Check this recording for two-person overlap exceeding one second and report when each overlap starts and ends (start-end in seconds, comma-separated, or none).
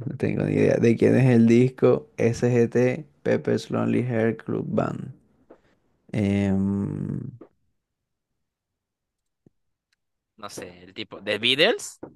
none